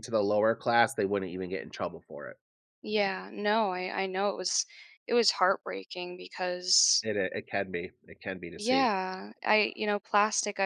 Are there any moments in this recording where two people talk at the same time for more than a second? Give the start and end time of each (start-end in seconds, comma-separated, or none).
none